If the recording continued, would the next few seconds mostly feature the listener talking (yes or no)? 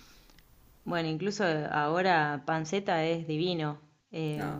no